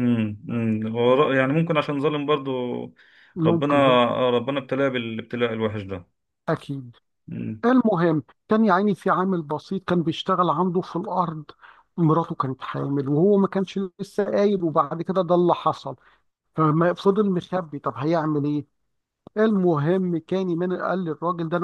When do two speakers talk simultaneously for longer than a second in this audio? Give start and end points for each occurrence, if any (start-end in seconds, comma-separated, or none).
none